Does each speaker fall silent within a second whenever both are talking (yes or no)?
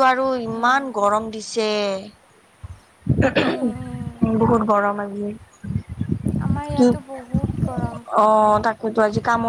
yes